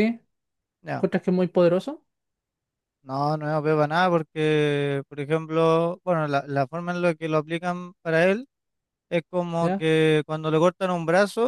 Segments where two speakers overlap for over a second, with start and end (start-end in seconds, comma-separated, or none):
none